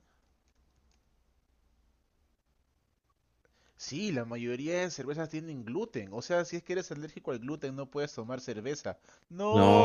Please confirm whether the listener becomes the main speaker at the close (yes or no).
yes